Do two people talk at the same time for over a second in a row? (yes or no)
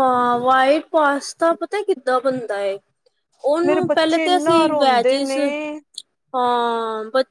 yes